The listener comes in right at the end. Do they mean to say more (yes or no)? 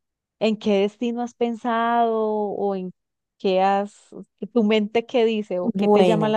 yes